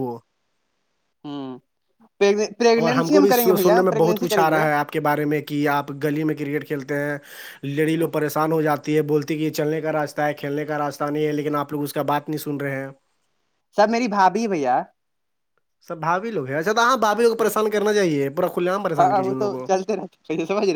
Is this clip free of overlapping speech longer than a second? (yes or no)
no